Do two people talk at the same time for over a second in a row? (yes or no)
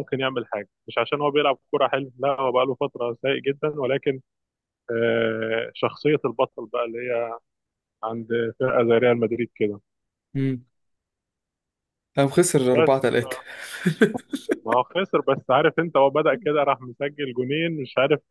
no